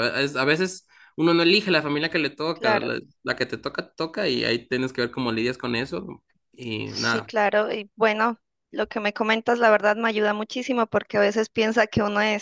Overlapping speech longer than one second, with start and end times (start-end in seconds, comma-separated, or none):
none